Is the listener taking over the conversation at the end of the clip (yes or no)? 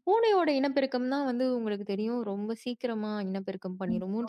no